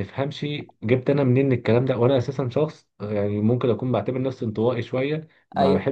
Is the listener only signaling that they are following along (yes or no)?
yes